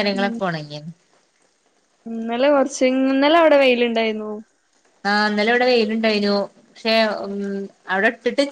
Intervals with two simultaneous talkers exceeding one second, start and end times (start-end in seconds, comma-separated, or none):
none